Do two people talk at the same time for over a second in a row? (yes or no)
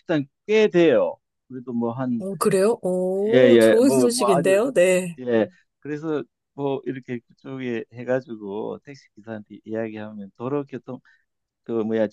yes